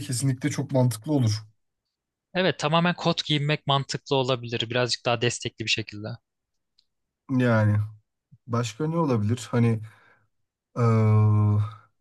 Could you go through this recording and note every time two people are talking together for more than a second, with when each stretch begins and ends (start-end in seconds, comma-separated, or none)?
none